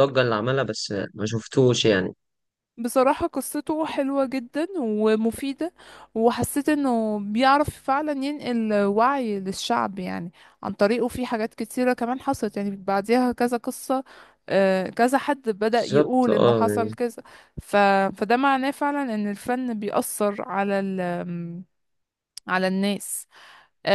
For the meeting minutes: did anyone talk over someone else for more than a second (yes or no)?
yes